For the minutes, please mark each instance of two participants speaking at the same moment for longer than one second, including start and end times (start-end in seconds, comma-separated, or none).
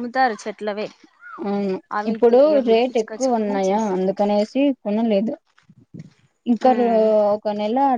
2.0-4.1